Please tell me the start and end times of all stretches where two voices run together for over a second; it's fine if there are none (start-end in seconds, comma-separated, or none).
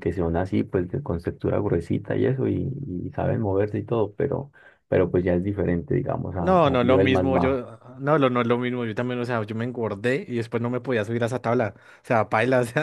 6.4-7.6